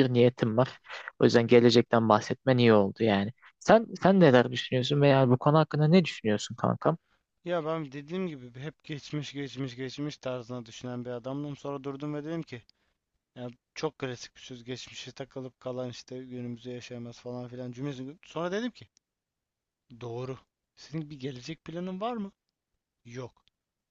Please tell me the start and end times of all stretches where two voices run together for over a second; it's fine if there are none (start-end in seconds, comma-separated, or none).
none